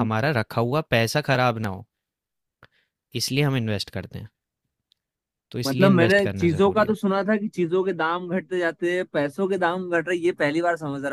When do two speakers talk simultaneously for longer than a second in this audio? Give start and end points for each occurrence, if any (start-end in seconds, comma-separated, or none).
5.7-7.0